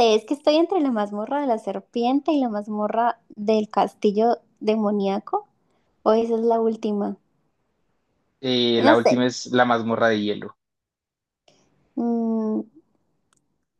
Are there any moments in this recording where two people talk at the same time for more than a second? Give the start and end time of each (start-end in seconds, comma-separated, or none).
none